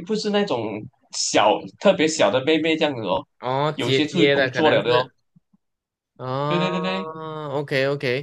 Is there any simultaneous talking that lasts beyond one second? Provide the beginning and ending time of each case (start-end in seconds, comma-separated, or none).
3.7-5.1